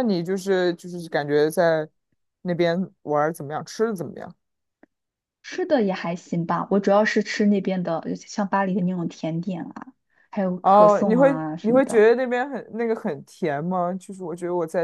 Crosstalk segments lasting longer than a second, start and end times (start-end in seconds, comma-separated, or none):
10.6-12.0